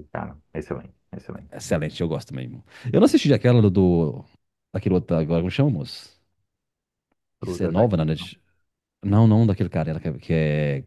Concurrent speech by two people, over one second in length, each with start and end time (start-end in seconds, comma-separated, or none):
none